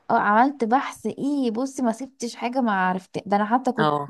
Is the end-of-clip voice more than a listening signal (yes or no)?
no